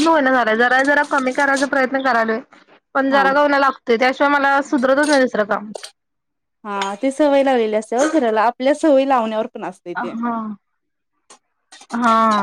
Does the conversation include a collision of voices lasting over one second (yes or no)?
no